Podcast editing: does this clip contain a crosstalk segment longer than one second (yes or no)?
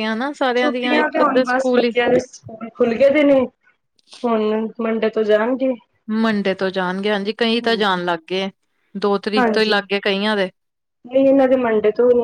yes